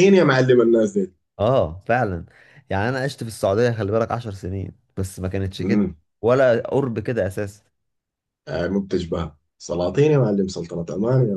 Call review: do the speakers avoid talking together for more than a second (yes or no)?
yes